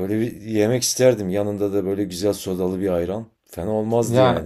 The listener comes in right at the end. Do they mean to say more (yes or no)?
yes